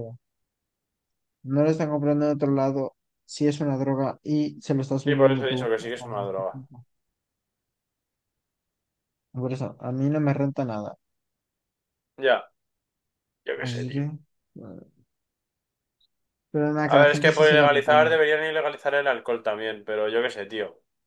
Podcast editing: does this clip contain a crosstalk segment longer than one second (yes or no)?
yes